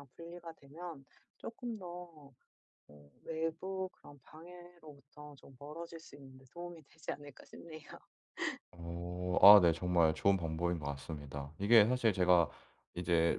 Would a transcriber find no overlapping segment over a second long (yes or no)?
yes